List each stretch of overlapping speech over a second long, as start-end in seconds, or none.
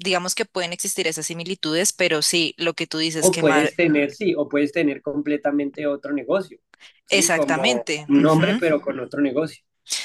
7.1-8.6